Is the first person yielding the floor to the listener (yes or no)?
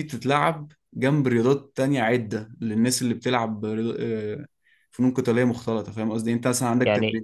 no